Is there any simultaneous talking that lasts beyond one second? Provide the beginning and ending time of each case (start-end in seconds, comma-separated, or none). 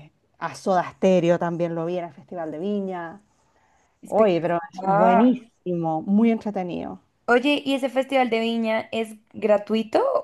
4.0-5.4